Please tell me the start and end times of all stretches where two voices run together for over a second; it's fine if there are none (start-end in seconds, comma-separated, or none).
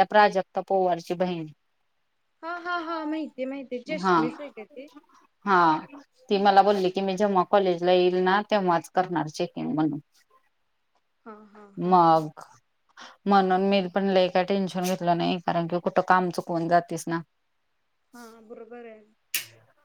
none